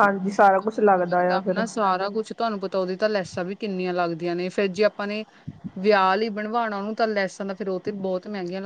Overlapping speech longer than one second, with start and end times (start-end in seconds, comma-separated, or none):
none